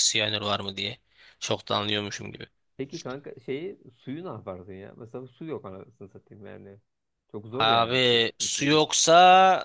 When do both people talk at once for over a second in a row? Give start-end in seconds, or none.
7.6-8.9